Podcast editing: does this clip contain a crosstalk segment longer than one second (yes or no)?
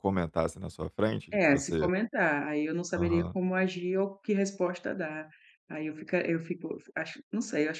no